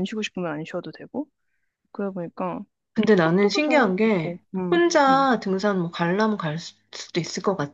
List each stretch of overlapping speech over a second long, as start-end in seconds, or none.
3.2-5.3